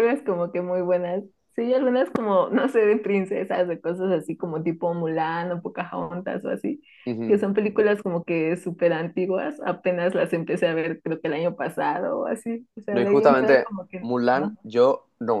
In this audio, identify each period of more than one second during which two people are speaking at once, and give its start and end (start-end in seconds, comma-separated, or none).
12.9-14.6